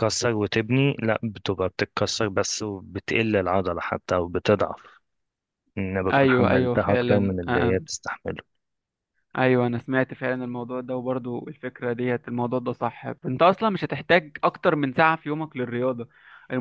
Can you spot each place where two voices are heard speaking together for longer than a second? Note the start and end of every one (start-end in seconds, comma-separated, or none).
6.1-7.8